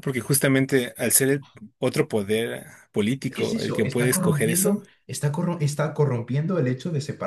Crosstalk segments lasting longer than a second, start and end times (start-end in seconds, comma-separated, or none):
3.3-4.8